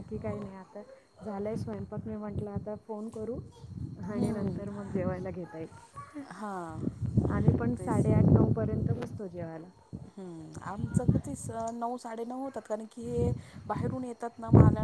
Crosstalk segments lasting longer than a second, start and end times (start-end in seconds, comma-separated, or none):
none